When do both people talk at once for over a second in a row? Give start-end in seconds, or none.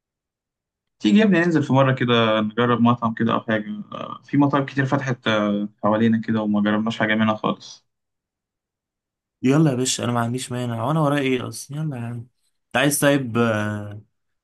none